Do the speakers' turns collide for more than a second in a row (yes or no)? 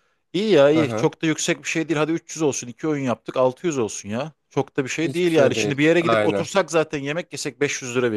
yes